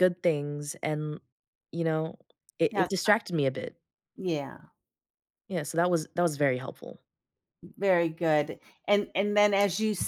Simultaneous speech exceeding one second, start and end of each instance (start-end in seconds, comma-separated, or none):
none